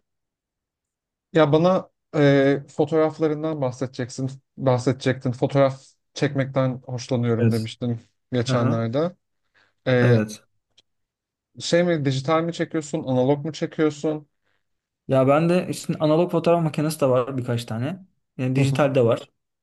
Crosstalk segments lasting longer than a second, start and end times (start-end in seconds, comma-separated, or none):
none